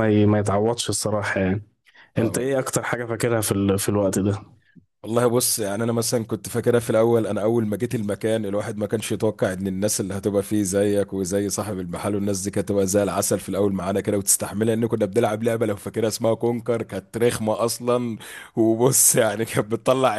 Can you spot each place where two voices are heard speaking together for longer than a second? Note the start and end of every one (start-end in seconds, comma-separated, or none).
none